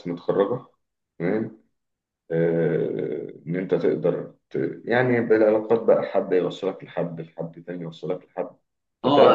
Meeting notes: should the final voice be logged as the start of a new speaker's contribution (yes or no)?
yes